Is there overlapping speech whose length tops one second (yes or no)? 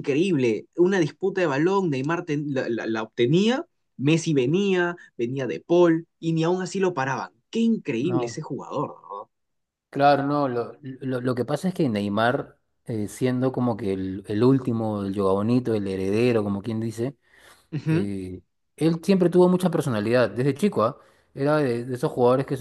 no